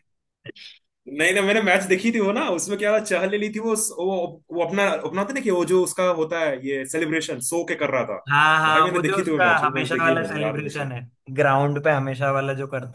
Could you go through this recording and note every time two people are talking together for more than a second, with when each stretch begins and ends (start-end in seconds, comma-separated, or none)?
8.7-10.9